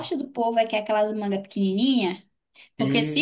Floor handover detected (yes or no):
no